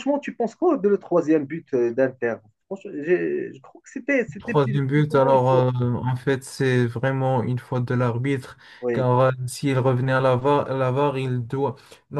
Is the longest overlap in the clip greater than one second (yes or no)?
yes